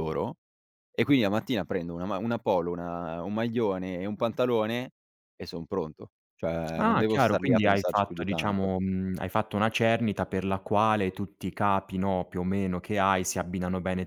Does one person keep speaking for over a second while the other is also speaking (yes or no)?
yes